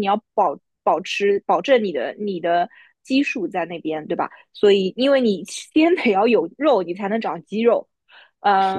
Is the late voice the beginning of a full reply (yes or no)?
no